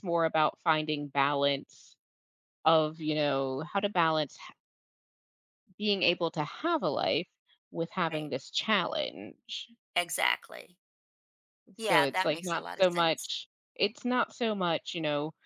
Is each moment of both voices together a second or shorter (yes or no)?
no